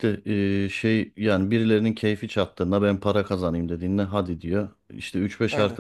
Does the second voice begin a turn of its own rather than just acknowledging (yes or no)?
no